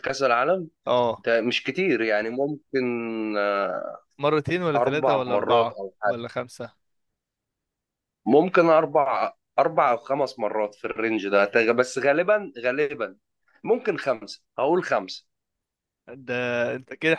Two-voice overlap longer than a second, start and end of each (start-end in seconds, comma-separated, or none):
4.8-6.2